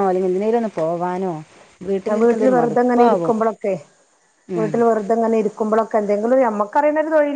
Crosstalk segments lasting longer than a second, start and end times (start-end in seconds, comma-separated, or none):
2.1-3.4